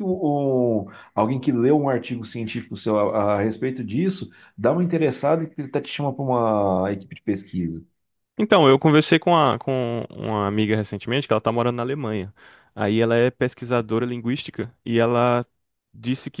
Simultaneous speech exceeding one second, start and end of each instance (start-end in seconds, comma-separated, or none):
none